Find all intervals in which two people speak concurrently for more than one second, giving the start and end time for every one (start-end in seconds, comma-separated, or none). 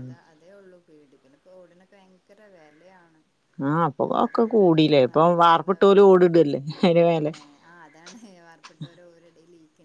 4.0-6.1